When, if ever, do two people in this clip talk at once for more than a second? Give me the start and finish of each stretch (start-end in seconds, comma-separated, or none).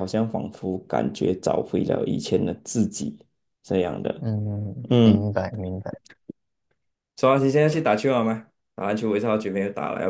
none